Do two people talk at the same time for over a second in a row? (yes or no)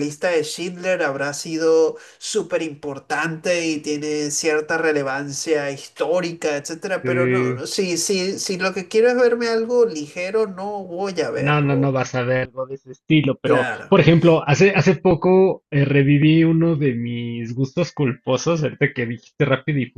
no